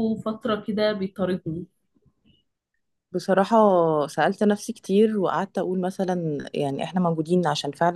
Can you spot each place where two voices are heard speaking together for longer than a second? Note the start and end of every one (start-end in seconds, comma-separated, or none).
none